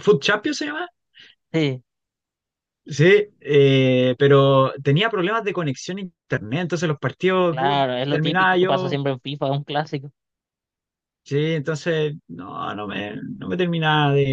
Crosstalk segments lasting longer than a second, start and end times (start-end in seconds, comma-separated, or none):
7.5-8.9